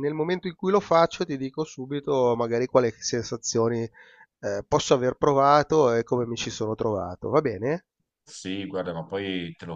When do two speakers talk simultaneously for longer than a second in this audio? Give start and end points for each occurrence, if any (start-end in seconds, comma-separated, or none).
none